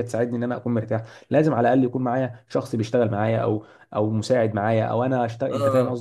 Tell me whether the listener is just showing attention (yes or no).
no